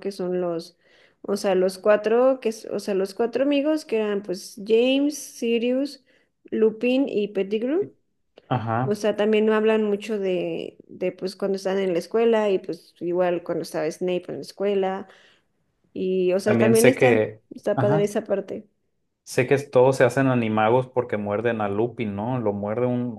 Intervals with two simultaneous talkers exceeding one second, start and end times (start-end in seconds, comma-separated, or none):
16.4-18.1